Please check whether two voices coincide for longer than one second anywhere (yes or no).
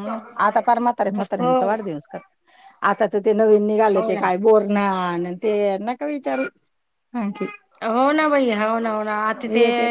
no